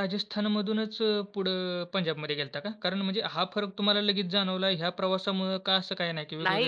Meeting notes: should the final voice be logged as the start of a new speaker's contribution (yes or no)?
yes